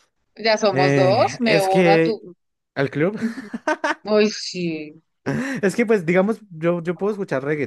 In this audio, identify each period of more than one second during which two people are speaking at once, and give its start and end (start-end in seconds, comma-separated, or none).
0.7-2.2